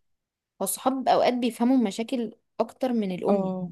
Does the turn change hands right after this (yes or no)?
no